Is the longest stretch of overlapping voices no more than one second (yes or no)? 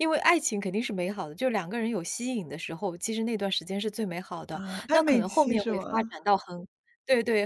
no